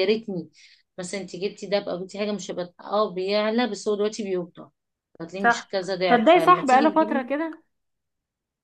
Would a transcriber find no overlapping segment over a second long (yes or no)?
no